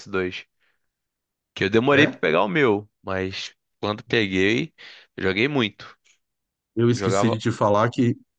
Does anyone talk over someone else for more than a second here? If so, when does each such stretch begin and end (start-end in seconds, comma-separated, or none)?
none